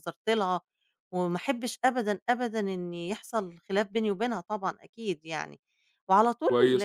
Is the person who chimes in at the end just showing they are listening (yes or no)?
no